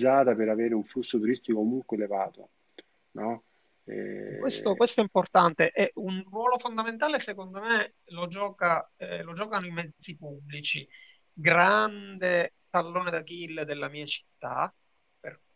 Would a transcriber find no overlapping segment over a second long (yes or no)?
yes